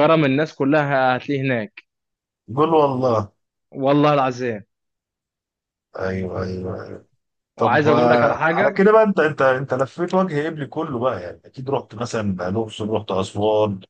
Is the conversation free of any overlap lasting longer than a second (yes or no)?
no